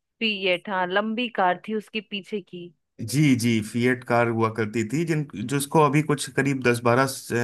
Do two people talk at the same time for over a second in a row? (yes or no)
no